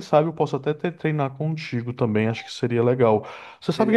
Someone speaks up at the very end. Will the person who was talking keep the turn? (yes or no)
yes